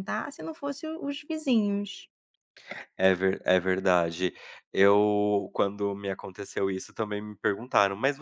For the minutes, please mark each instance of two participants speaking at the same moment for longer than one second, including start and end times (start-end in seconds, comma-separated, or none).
none